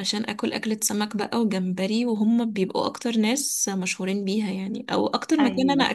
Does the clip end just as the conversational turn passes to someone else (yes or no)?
no